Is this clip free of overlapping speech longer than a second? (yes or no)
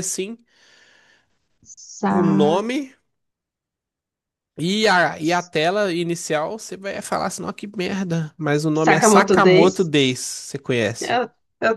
no